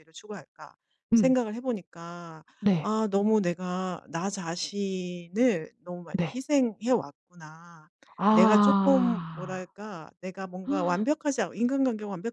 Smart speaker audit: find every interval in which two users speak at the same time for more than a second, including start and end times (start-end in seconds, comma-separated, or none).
8.3-9.7